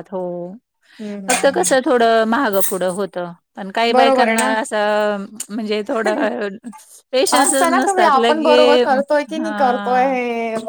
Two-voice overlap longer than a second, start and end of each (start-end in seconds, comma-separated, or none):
7.3-10.2